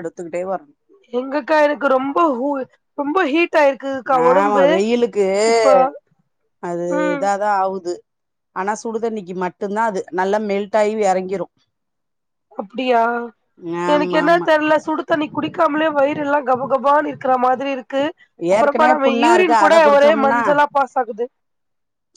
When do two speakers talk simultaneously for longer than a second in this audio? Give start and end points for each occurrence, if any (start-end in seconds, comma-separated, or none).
18.6-20.4